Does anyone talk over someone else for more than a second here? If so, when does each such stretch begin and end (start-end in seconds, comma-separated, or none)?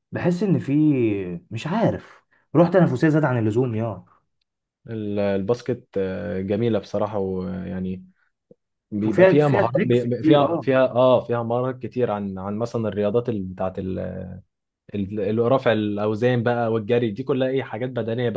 9.1-10.7